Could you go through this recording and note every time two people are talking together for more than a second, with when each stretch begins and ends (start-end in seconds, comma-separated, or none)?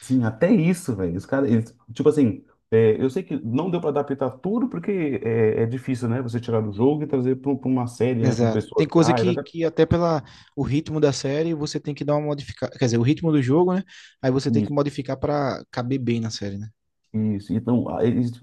8.2-9.4